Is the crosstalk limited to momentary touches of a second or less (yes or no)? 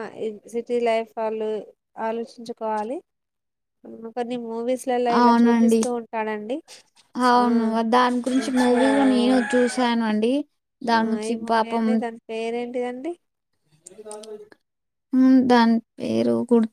yes